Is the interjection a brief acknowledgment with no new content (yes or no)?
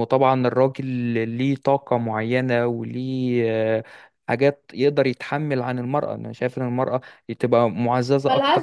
no